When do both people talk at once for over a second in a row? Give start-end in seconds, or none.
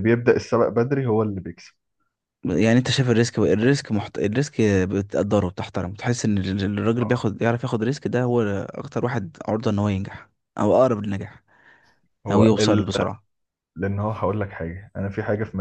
none